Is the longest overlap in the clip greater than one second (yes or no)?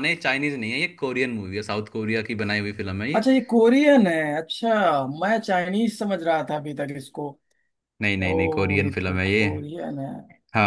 yes